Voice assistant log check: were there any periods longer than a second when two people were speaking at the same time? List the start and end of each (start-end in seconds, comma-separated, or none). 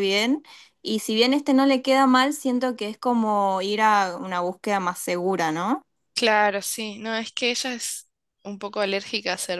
none